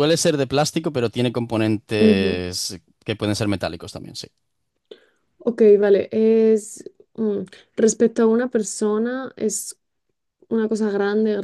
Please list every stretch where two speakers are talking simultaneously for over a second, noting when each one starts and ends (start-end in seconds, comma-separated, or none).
none